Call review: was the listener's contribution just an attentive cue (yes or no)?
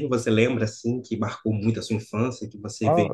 no